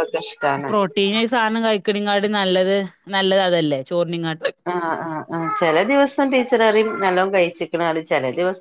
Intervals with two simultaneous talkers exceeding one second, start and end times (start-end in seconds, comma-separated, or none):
none